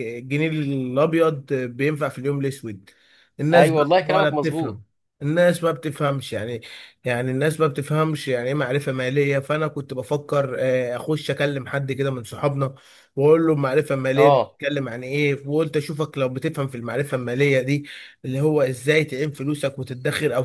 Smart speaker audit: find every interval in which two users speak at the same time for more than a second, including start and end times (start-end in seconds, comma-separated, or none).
3.5-4.8